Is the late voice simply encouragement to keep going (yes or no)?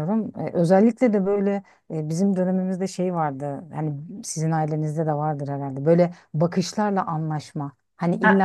yes